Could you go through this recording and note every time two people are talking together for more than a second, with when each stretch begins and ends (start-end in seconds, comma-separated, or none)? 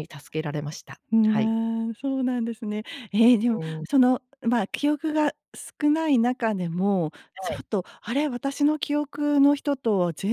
none